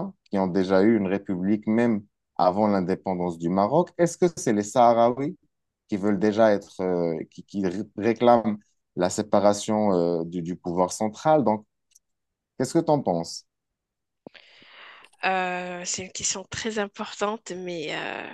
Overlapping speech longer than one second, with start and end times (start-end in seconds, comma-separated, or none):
none